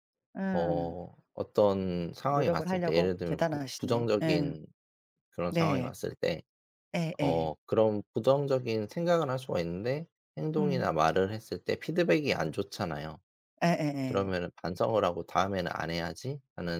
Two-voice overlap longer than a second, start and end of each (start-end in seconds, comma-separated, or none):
2.3-4.5